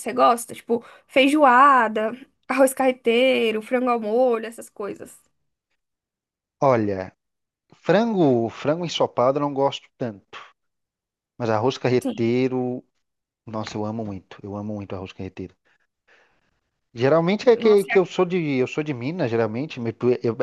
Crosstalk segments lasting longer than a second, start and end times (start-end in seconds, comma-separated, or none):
none